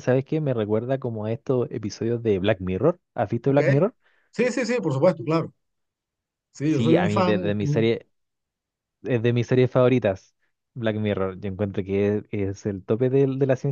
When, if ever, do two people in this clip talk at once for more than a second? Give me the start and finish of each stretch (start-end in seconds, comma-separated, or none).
6.6-7.9